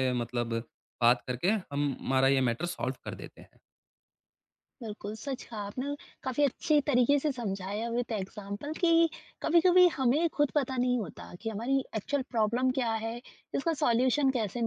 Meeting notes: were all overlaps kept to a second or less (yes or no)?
yes